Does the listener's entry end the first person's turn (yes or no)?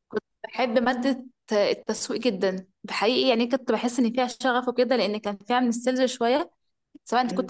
no